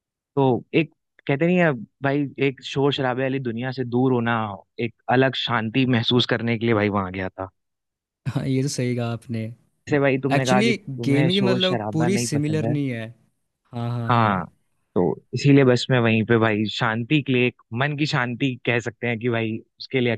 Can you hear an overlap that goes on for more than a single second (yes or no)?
yes